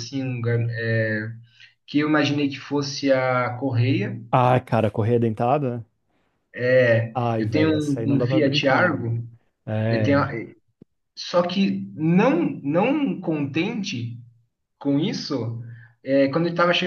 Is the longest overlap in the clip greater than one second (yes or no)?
yes